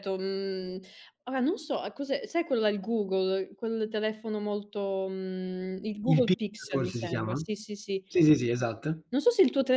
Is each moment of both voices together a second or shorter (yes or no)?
no